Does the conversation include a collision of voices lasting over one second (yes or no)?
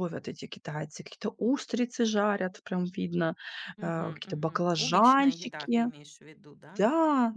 yes